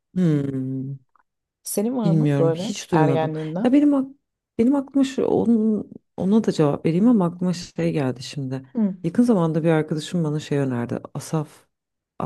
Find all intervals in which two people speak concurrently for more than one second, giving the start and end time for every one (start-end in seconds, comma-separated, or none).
2.0-3.8